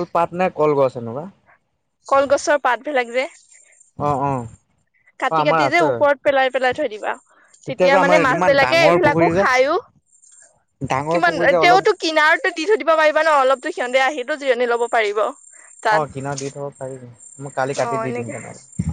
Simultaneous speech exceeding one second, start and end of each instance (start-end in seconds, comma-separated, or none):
7.7-9.4